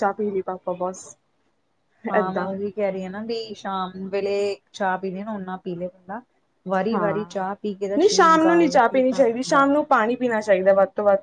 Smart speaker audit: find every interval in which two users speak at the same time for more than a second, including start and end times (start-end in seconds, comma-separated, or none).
8.0-9.9